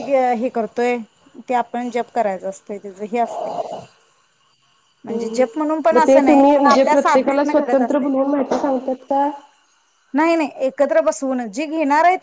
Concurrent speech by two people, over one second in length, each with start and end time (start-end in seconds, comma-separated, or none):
6.5-8.1